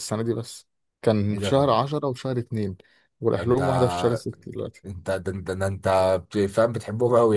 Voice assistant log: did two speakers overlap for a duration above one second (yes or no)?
no